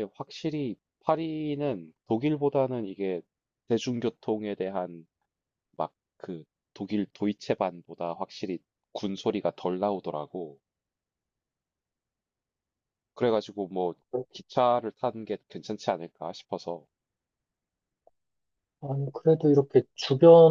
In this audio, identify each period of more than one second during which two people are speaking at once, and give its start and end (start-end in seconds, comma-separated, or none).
none